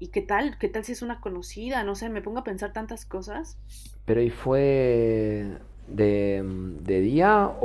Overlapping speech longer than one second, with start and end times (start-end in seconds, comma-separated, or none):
none